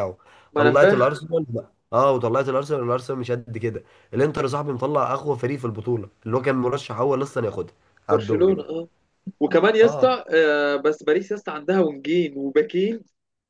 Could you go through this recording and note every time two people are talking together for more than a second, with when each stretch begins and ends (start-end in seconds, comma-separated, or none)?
none